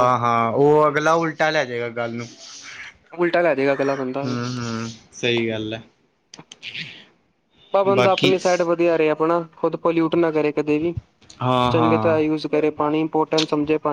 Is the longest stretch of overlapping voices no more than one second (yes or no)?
yes